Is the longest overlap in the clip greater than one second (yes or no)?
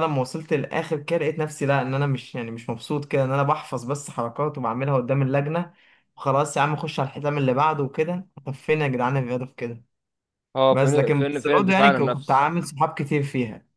yes